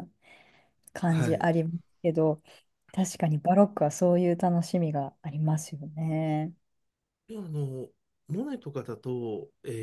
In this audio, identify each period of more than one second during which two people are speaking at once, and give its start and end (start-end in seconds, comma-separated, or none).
none